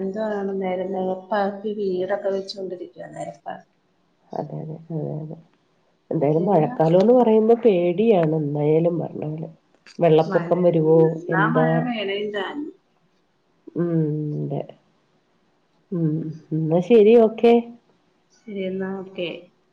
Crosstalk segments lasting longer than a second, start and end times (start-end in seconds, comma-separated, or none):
none